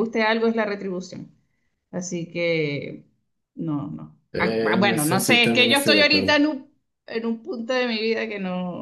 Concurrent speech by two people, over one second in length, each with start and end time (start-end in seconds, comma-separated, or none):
4.3-6.4